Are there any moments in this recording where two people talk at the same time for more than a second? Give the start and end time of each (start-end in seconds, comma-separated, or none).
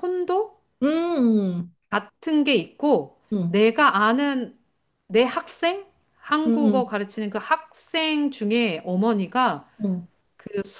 none